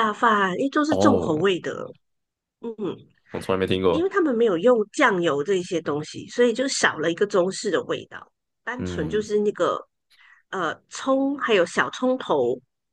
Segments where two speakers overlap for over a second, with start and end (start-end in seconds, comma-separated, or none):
none